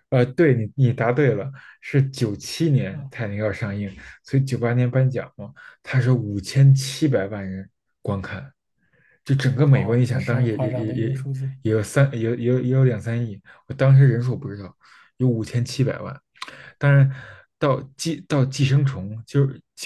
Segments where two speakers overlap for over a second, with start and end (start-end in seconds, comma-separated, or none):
9.7-11.1